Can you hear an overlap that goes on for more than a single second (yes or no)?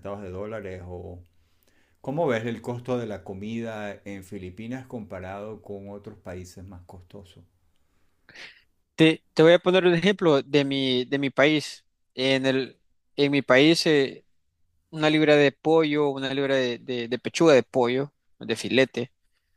no